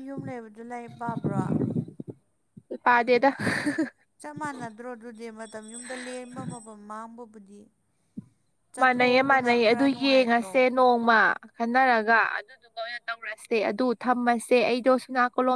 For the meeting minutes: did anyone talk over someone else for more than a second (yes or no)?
yes